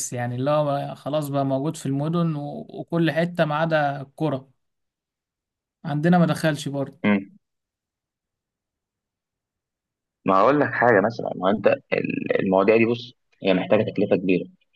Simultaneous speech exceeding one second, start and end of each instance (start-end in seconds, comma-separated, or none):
none